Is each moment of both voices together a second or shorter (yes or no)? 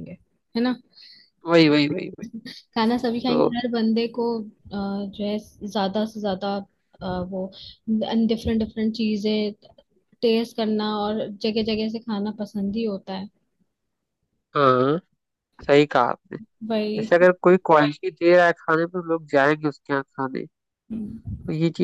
yes